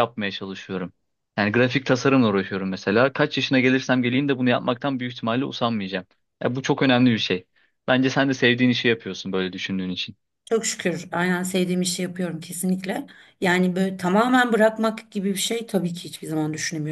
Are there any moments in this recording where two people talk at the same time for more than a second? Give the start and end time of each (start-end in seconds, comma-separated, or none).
none